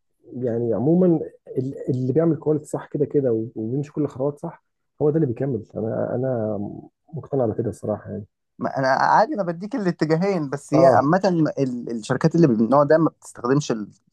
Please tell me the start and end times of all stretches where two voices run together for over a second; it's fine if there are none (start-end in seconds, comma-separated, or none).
none